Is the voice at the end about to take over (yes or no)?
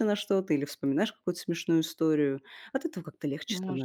yes